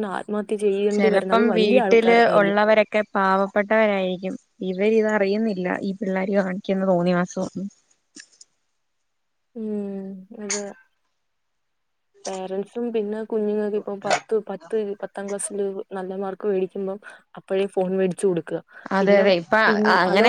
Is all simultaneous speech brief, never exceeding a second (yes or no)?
no